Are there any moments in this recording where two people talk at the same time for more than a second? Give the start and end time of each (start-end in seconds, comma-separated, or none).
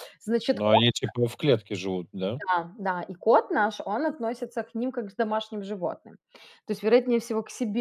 none